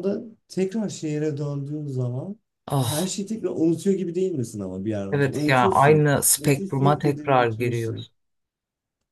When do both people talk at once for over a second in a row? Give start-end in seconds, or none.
5.1-8.1